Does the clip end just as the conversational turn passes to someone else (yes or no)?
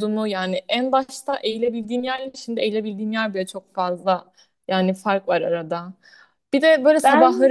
no